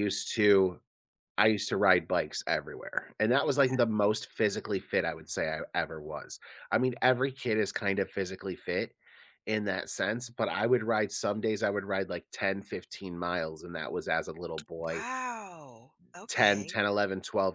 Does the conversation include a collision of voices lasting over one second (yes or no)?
no